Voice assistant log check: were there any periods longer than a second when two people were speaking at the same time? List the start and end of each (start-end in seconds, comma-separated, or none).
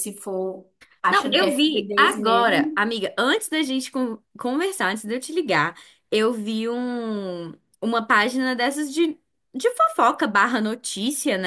1.1-2.8